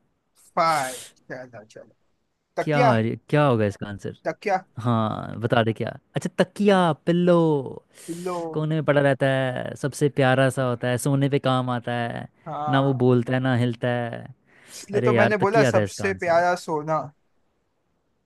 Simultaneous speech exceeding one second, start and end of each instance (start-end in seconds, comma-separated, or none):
14.9-16.4